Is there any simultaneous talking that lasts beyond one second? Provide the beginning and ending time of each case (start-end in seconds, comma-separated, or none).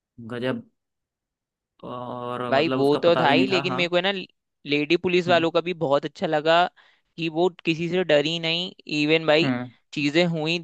2.5-3.8